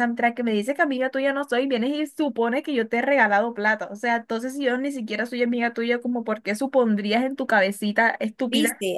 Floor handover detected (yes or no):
yes